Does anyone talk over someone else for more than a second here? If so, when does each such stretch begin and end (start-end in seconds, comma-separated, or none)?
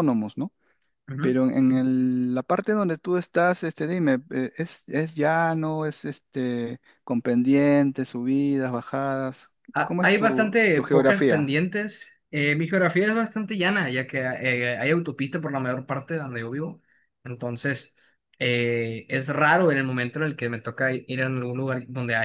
9.7-11.6